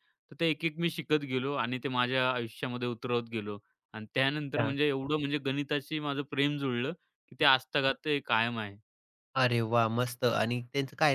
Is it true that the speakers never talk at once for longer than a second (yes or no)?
yes